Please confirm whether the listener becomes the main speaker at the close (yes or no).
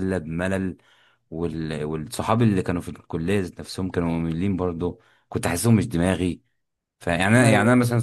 no